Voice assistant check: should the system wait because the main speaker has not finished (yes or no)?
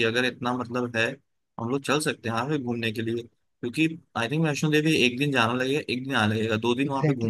no